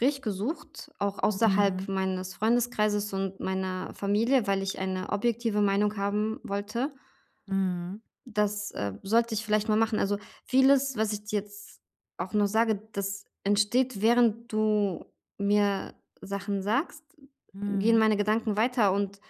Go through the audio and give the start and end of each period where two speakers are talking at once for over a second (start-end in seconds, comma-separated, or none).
none